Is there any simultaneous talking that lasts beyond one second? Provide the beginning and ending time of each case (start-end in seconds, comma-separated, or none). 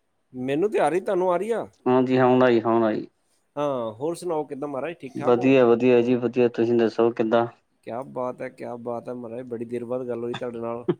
none